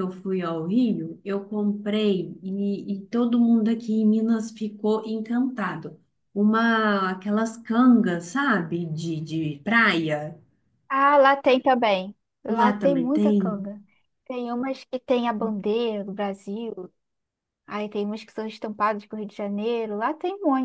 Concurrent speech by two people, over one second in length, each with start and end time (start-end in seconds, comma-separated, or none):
12.5-13.7